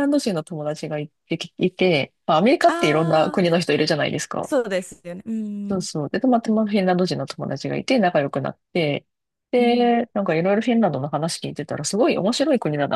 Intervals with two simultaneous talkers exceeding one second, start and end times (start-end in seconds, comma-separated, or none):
none